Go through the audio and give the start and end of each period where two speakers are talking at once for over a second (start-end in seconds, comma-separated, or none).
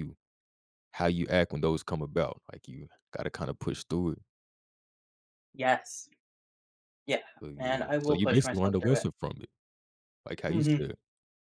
7.4-9.1